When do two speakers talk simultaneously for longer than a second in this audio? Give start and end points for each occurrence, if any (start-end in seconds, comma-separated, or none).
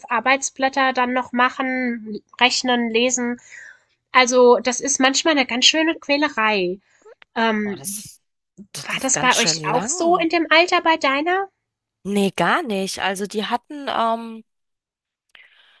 8.8-10.3